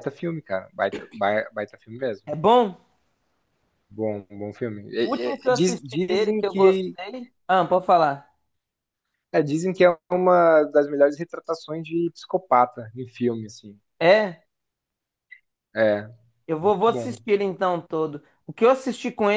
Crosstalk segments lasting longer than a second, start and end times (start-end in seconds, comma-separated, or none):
5.0-7.0